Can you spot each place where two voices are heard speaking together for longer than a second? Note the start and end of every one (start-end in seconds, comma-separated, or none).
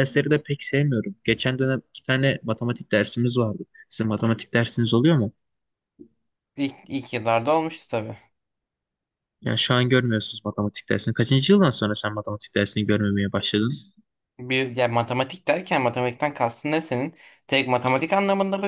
none